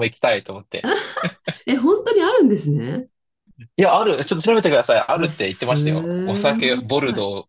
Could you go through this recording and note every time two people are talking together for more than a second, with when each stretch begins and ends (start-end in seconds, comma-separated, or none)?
5.1-6.9